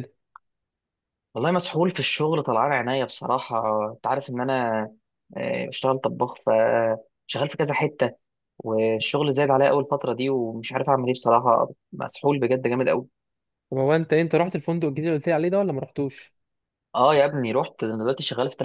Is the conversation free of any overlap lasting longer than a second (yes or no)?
yes